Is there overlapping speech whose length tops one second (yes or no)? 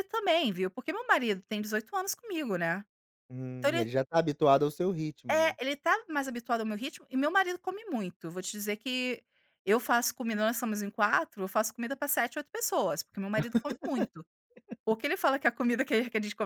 no